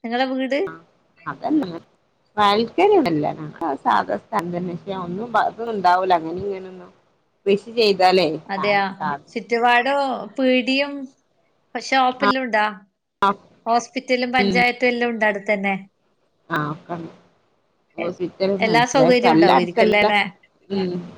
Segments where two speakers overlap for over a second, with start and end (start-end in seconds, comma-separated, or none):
18.6-20.1